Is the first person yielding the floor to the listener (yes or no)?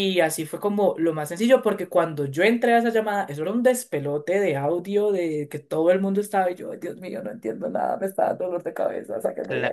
yes